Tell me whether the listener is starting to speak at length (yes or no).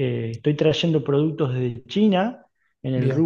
no